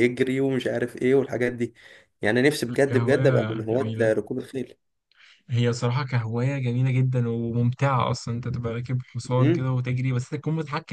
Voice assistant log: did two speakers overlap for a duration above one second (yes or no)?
yes